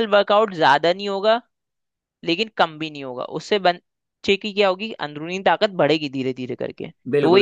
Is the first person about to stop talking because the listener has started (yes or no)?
yes